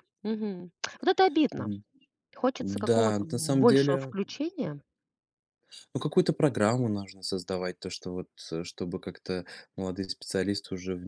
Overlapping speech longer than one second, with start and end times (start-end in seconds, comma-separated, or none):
2.6-4.1